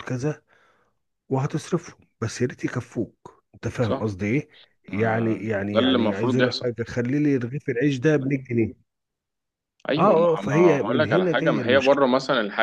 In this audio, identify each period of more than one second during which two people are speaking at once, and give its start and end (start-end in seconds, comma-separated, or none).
4.9-6.7, 10.0-12.0